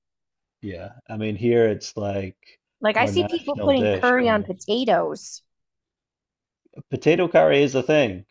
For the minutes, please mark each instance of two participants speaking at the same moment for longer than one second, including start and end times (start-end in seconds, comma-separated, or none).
2.9-4.6